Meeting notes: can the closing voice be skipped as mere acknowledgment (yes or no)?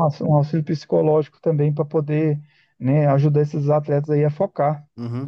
no